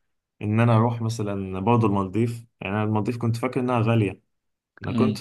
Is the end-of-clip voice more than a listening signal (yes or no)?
no